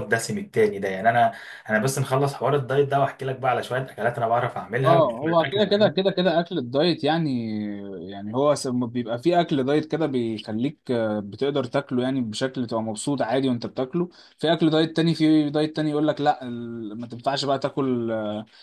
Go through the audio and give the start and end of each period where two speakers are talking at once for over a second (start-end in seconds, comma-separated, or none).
4.8-6.1